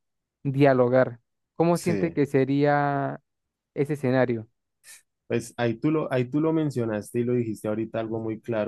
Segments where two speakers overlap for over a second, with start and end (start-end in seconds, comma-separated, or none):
none